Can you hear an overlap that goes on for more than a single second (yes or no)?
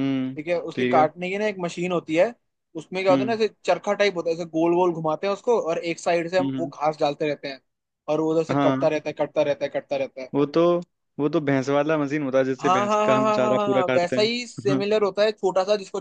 yes